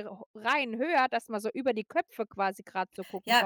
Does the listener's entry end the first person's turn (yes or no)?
yes